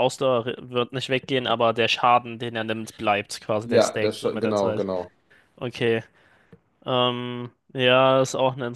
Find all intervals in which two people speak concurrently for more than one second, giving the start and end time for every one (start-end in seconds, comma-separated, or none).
3.6-4.9